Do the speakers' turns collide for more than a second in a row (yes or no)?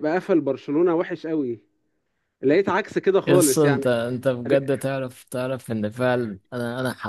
no